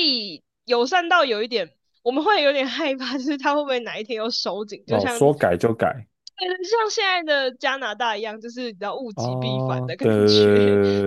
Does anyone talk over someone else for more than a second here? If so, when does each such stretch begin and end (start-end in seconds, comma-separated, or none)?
9.1-10.5